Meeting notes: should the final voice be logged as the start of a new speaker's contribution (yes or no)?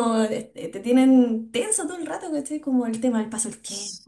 no